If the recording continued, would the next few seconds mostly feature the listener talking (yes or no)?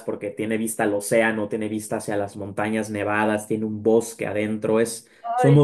yes